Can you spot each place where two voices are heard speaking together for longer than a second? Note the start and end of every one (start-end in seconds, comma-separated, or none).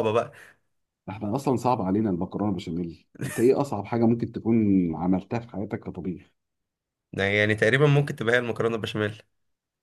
none